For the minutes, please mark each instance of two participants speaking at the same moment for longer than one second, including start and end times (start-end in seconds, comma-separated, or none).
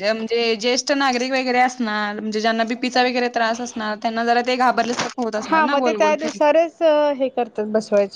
none